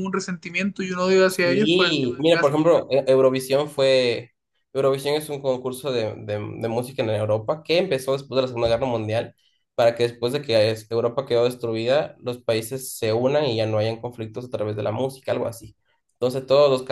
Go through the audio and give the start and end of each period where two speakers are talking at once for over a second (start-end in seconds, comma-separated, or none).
1.3-2.7